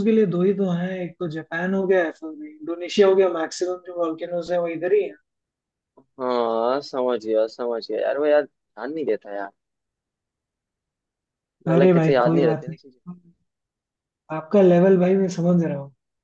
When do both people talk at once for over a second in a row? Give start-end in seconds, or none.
11.7-13.0